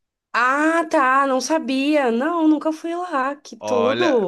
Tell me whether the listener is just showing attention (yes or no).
no